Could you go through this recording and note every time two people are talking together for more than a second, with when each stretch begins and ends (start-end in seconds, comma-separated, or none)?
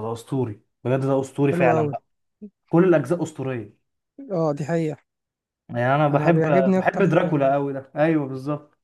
6.1-7.5